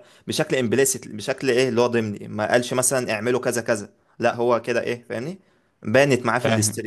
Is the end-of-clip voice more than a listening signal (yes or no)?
no